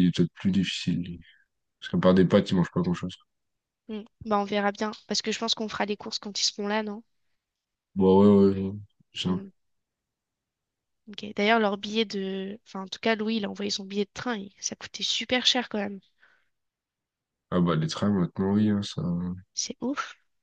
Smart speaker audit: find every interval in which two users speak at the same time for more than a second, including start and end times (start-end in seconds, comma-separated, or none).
none